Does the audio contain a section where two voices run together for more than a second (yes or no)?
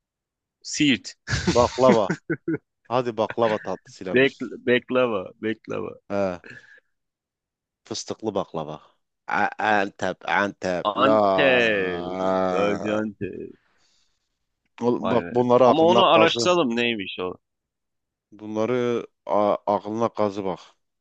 yes